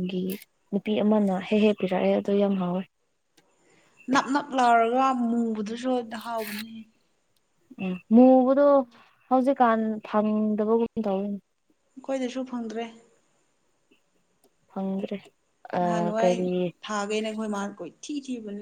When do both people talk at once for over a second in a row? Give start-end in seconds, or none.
none